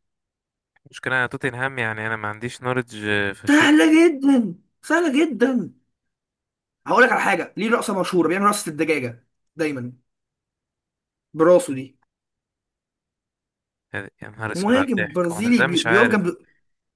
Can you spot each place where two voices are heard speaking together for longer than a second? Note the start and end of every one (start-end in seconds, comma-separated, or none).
14.5-16.3